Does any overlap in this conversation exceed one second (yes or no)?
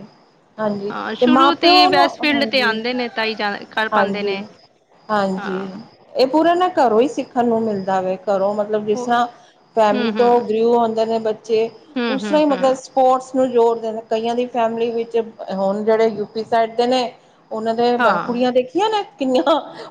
yes